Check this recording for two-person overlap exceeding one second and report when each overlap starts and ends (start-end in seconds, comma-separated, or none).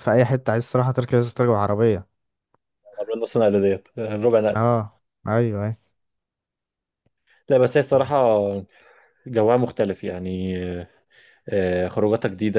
none